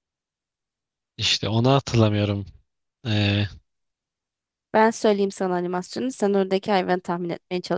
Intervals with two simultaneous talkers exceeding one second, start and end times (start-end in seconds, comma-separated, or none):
none